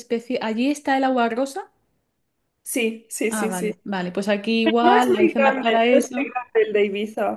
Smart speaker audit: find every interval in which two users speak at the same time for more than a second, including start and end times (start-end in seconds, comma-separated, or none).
4.8-6.3